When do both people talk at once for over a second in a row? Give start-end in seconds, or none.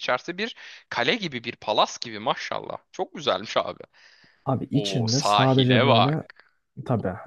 4.7-6.2